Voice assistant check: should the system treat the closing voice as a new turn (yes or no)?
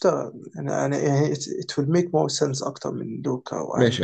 yes